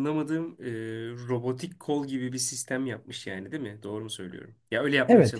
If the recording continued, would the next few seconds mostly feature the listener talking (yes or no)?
yes